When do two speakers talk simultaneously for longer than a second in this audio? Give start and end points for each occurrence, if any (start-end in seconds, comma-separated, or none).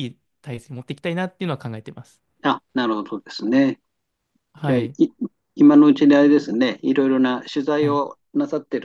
none